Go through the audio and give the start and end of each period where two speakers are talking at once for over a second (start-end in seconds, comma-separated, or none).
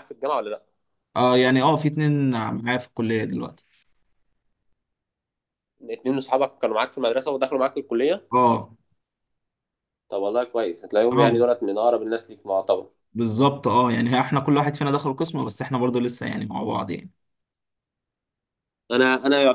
none